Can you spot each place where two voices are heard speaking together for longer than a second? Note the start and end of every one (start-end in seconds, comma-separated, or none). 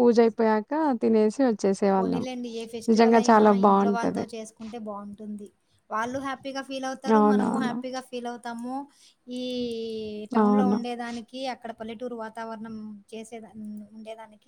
none